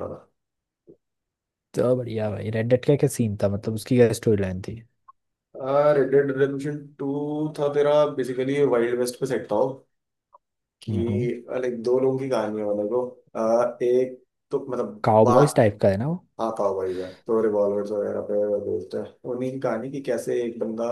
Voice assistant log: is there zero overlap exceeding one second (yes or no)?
yes